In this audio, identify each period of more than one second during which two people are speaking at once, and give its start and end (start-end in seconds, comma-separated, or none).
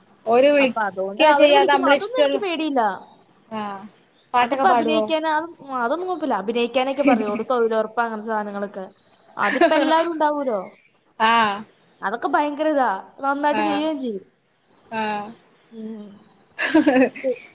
0.6-2.4